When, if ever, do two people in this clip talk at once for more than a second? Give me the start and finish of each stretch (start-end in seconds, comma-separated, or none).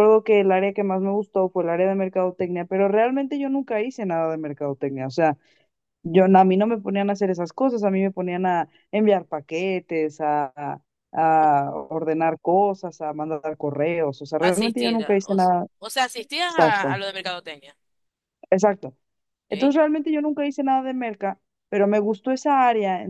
14.5-15.7